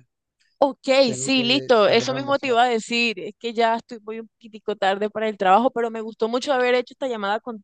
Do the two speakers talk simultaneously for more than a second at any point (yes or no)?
yes